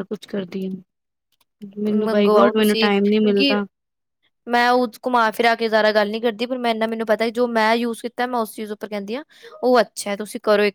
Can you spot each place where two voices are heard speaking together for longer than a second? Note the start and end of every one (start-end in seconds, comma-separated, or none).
1.9-3.5